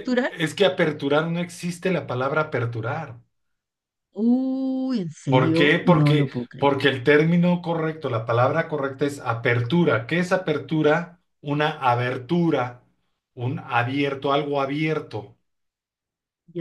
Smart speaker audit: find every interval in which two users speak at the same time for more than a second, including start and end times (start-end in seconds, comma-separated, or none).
5.3-6.7